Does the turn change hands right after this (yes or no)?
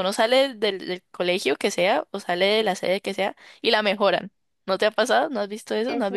yes